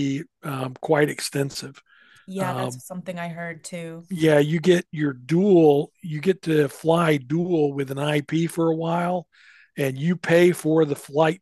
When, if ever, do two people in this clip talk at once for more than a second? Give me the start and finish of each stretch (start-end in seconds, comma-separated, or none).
none